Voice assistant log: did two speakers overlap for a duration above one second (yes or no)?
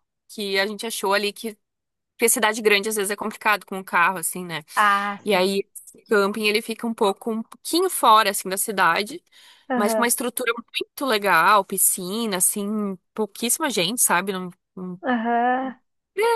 no